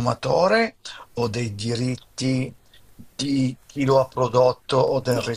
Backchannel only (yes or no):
no